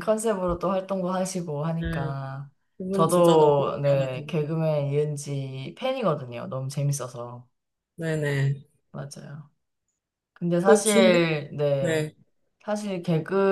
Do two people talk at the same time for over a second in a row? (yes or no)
yes